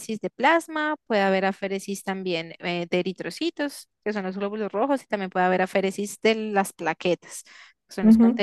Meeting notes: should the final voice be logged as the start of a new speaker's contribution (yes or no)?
no